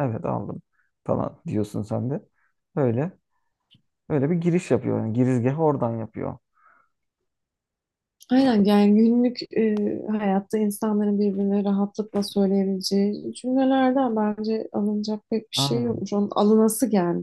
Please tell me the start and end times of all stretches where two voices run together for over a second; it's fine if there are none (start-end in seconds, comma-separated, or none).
none